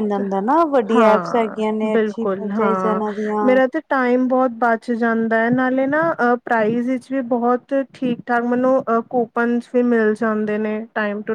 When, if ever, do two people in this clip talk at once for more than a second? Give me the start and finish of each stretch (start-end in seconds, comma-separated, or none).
0.9-3.0